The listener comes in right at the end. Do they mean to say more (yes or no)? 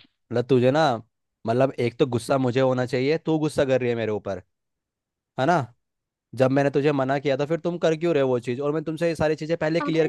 yes